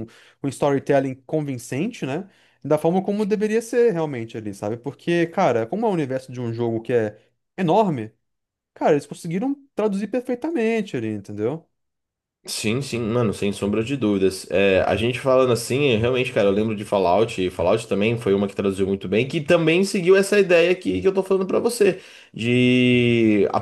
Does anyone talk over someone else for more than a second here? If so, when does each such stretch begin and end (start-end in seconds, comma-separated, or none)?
none